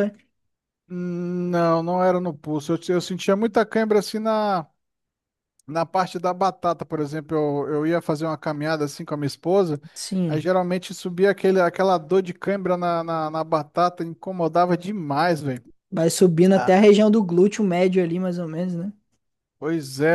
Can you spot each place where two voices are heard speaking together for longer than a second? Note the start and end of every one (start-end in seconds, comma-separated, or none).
none